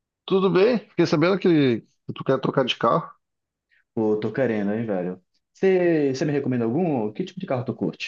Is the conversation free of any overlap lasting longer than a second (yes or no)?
yes